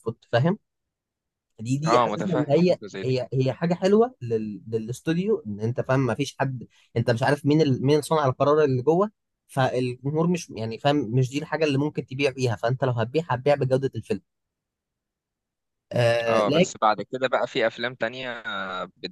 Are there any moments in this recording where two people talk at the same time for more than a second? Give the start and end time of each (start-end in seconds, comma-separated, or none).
1.9-3.2